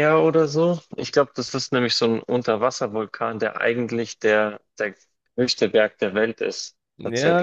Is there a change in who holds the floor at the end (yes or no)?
yes